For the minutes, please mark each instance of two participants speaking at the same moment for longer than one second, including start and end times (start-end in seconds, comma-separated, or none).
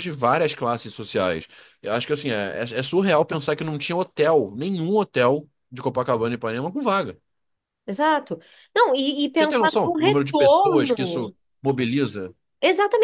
9.3-11.3